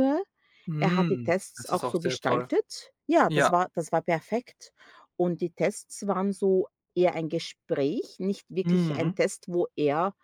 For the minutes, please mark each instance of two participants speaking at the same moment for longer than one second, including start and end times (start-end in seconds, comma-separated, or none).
0.8-2.5